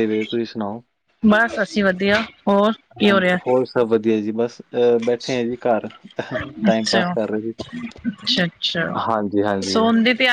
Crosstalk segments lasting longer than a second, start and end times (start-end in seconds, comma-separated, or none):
none